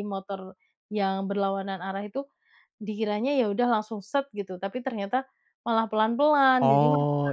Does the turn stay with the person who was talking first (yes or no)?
no